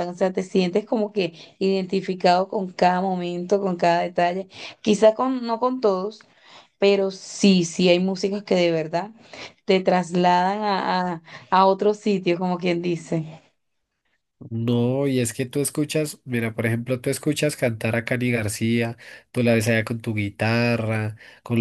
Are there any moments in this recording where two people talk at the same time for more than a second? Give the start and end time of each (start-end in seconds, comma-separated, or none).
none